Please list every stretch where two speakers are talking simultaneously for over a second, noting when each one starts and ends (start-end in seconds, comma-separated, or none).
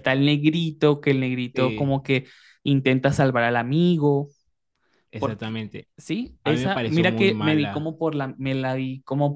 6.4-7.9